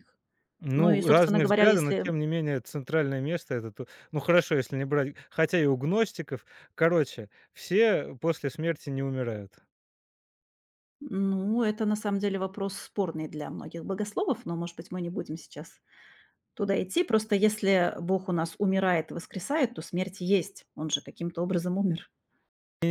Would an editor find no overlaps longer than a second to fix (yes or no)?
no